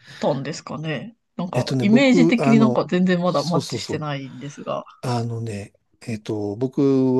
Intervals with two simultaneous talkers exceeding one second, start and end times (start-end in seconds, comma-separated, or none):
1.5-4.1